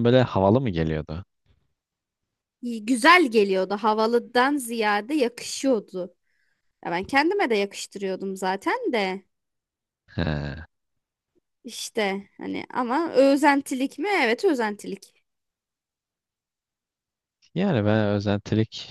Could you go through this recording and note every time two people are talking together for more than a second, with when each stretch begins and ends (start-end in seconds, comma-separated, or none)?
none